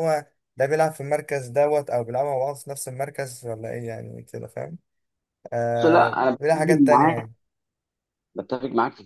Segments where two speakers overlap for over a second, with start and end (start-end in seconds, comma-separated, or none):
5.8-7.2